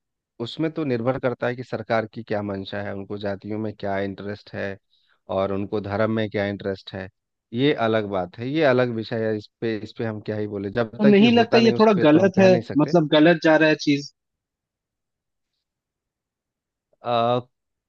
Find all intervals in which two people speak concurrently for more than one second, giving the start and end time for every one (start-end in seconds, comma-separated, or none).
11.0-12.9